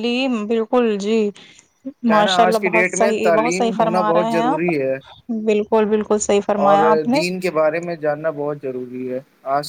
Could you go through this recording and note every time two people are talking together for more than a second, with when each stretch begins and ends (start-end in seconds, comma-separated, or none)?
2.1-4.7